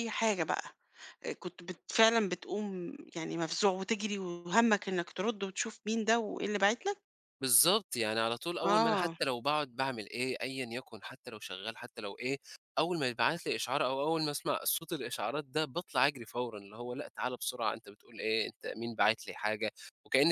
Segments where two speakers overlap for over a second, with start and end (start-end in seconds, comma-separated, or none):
none